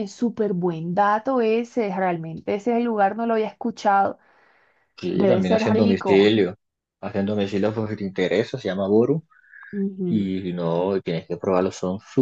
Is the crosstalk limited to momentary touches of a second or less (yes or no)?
no